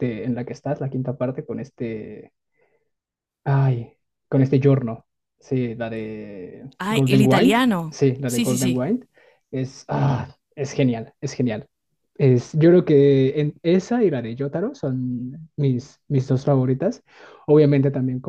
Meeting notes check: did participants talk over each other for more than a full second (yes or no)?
yes